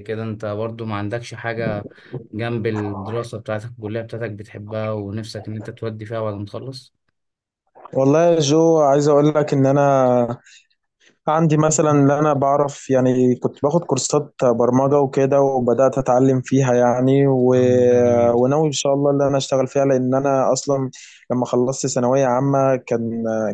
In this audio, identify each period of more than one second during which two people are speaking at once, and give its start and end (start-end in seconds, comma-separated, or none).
none